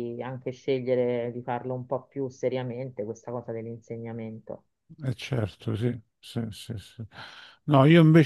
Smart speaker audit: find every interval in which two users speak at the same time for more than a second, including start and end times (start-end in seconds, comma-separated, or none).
none